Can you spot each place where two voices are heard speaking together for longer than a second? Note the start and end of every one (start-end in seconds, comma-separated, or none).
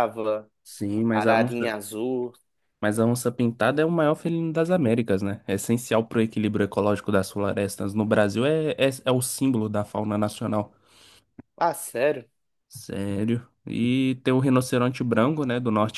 none